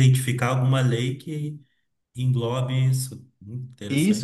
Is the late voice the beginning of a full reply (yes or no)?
yes